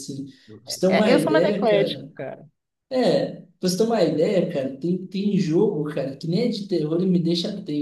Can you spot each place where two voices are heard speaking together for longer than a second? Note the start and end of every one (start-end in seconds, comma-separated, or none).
0.9-2.1